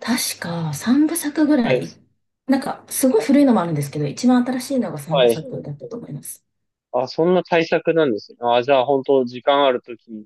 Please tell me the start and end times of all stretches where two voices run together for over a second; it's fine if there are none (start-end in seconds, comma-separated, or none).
none